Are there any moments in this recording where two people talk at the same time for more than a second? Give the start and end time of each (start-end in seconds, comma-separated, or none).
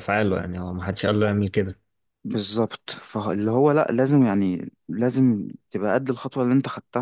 none